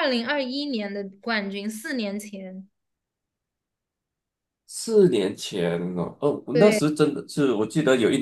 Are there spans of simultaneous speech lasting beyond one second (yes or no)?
no